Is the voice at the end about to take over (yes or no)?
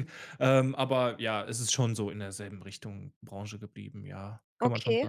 yes